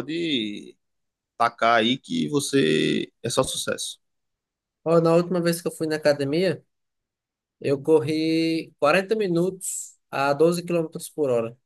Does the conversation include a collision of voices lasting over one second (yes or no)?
no